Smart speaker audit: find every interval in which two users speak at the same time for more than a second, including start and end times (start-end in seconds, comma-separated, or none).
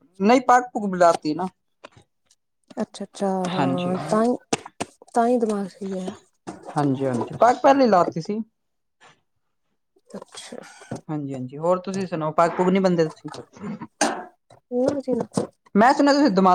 none